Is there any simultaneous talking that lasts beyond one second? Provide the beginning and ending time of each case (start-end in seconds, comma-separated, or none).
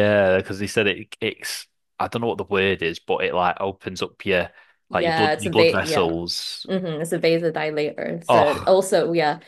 4.9-6.1